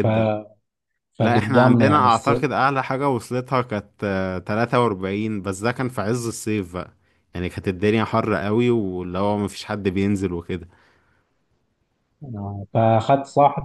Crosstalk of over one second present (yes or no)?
yes